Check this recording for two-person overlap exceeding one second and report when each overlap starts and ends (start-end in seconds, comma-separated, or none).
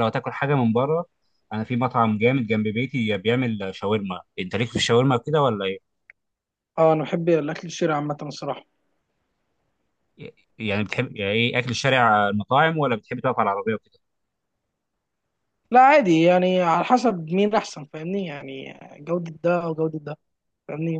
none